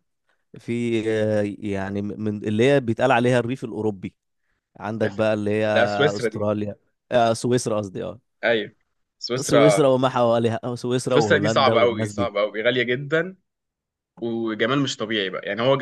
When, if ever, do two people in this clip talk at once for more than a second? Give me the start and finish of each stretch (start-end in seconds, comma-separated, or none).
11.1-12.3